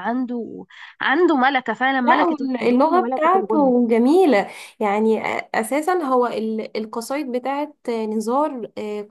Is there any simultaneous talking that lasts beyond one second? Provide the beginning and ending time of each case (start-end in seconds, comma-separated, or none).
2.0-3.7